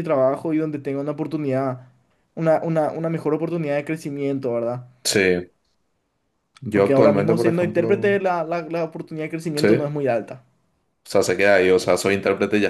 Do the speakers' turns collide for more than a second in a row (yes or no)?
yes